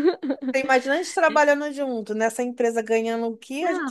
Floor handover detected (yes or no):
no